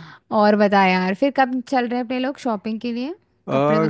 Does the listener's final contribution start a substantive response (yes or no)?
yes